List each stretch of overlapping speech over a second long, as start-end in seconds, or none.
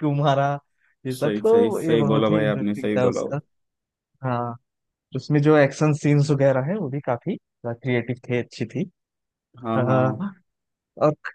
1.2-3.2